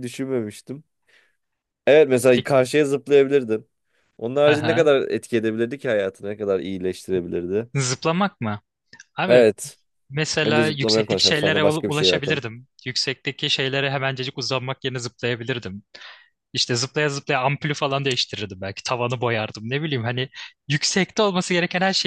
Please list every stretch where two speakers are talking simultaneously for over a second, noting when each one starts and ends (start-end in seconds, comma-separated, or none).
10.4-12.4